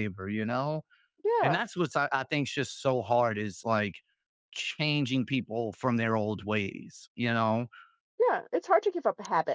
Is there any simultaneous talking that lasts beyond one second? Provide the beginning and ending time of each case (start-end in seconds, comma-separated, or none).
none